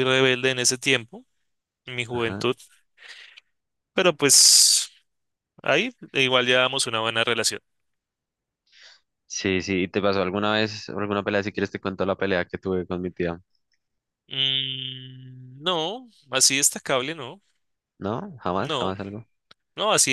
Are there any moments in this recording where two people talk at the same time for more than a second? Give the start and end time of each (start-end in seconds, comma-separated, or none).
none